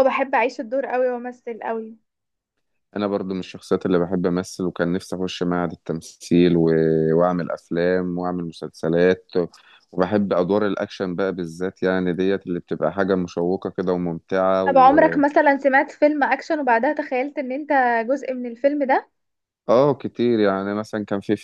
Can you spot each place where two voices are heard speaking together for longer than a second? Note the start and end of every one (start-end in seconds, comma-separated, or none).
none